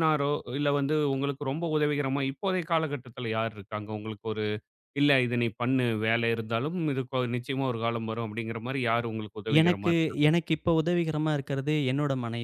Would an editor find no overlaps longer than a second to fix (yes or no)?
yes